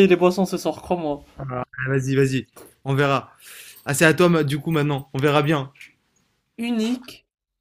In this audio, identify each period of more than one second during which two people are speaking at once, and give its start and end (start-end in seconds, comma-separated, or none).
none